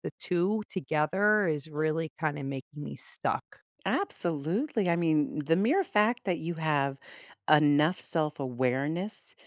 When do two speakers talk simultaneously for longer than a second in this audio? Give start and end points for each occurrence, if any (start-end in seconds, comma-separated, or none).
none